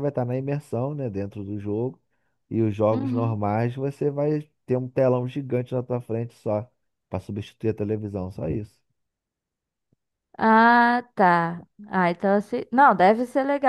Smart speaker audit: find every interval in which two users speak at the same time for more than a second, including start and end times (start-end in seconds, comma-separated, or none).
none